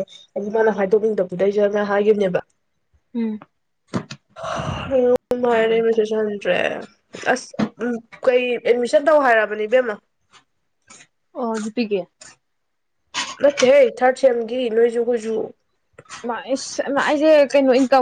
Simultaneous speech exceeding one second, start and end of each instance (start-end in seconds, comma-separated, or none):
none